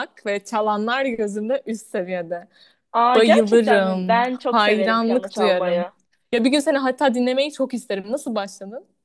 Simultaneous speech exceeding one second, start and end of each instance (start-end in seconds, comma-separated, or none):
3.1-5.9